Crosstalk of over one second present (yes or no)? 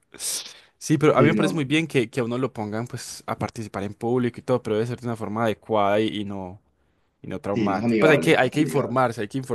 yes